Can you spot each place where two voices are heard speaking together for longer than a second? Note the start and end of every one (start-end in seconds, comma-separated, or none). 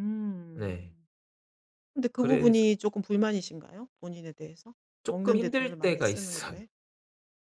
5.0-6.6